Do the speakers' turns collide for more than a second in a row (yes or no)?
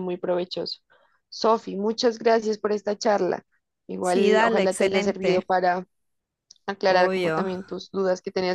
yes